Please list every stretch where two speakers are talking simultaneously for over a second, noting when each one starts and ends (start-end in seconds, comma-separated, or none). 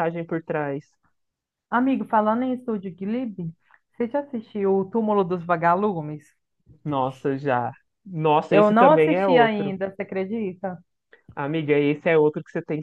8.5-9.7